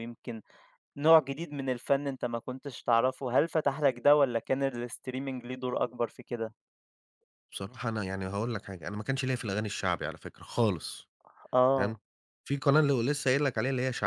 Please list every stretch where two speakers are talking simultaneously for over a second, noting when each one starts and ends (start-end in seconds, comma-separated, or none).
none